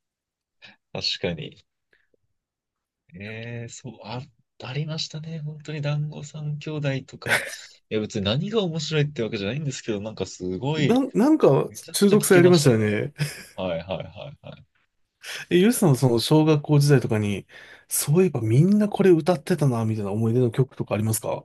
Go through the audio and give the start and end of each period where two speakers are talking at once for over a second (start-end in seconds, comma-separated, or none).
11.7-13.1